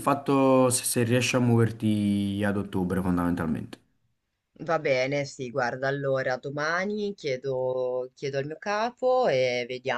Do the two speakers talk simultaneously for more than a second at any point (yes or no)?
no